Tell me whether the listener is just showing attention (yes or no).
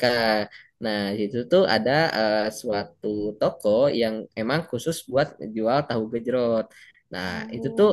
yes